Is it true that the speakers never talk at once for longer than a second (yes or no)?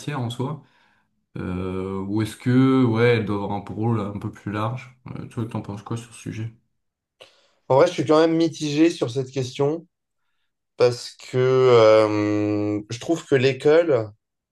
yes